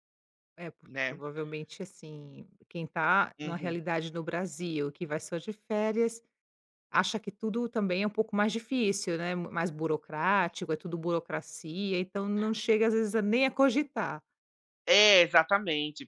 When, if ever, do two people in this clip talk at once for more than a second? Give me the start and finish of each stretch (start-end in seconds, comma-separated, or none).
none